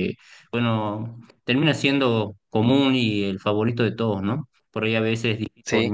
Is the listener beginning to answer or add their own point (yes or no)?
no